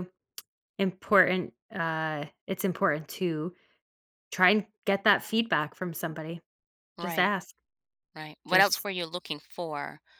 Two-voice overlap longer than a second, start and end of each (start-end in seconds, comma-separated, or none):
none